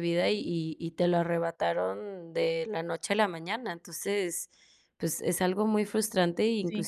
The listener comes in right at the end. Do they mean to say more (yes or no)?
no